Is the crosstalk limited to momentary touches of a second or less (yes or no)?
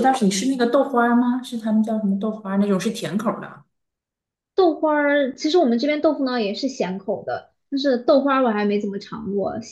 yes